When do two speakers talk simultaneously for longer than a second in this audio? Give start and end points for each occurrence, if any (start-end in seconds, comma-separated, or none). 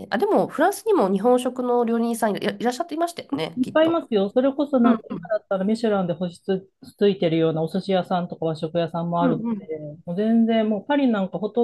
none